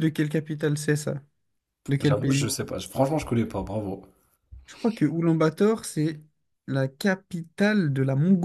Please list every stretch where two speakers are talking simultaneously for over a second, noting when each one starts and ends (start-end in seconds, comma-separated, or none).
none